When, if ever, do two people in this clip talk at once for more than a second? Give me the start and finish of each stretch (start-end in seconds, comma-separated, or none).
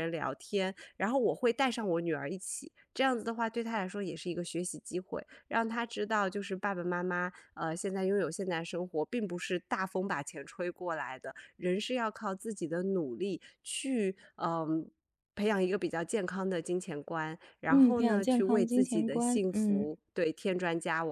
17.7-19.9